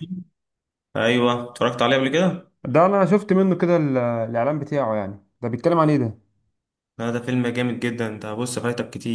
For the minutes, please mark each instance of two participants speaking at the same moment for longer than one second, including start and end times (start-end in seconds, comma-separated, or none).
none